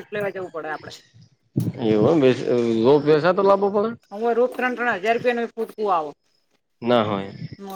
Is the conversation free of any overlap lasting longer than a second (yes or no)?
yes